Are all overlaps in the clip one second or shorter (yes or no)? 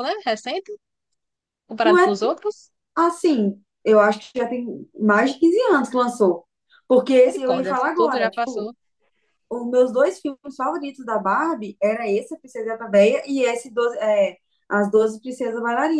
no